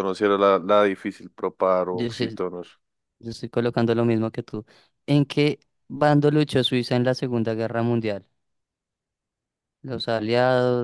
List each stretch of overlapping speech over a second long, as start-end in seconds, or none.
none